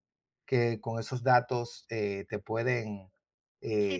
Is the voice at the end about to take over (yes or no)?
yes